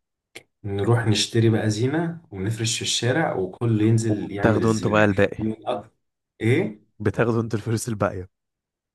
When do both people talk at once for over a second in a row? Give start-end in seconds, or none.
4.1-5.4